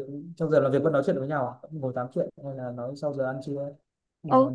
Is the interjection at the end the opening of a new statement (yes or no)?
yes